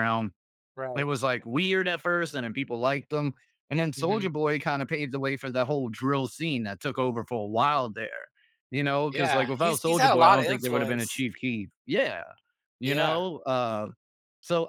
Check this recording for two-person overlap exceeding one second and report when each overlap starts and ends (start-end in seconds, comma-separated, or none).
9.1-11.0